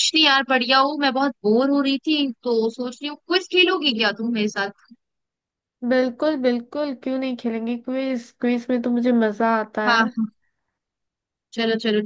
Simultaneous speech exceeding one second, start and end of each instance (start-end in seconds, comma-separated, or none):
none